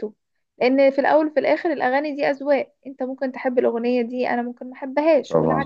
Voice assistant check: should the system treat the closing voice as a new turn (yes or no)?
yes